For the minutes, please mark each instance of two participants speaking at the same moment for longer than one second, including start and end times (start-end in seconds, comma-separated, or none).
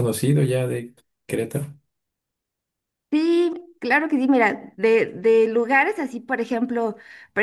none